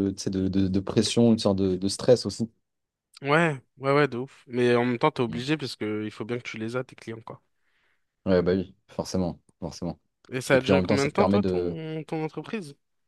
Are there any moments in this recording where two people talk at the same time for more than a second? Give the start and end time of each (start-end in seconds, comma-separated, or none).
10.5-11.8